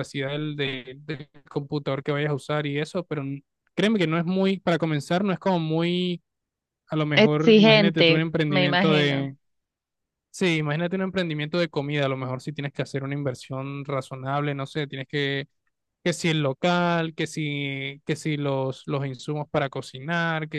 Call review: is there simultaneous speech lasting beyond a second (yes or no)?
yes